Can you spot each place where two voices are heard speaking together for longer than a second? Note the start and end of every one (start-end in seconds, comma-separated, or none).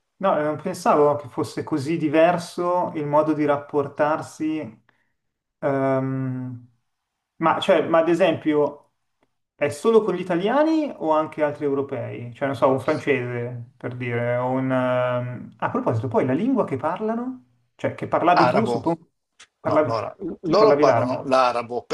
19.6-21.3